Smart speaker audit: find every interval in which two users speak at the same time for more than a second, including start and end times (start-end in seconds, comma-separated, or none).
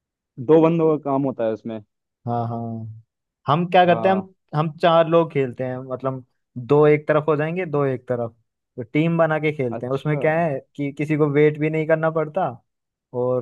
none